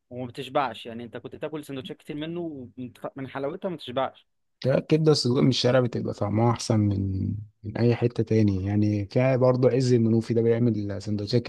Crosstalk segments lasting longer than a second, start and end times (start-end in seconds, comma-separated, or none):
none